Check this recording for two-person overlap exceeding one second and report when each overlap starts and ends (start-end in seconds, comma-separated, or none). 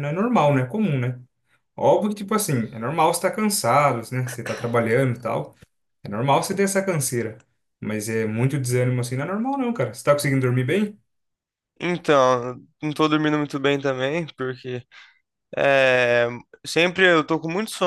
none